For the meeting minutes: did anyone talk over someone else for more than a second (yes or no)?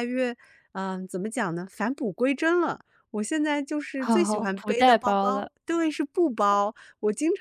yes